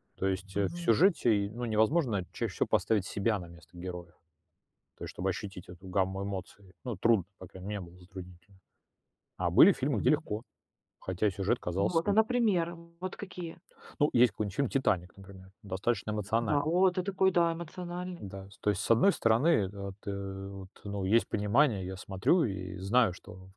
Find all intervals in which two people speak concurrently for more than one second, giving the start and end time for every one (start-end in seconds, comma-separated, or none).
none